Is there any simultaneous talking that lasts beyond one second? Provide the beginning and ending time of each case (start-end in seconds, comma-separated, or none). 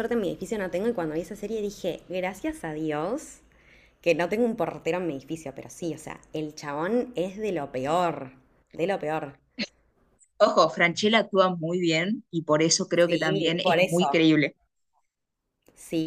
13.0-14.3